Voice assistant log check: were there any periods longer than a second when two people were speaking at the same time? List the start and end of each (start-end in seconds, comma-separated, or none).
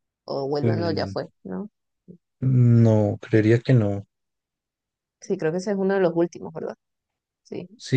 none